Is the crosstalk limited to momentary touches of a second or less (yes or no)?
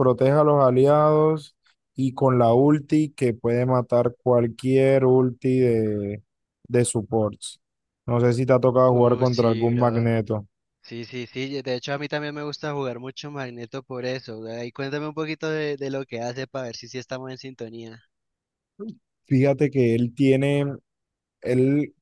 no